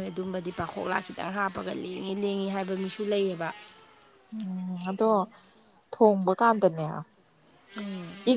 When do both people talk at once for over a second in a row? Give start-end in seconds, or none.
none